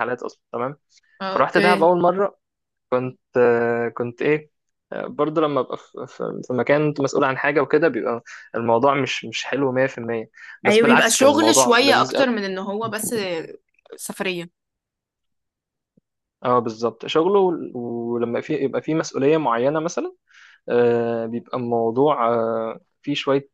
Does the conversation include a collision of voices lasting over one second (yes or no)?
yes